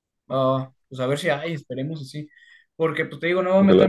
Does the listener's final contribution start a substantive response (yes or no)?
no